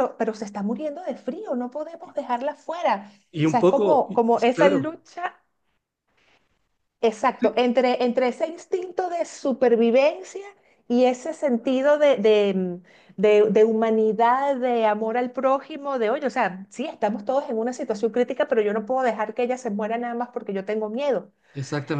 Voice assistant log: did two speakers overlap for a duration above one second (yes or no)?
yes